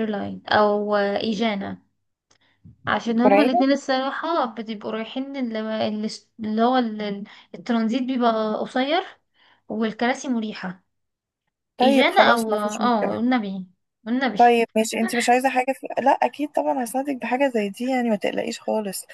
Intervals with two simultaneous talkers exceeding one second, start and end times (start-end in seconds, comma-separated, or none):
11.8-13.2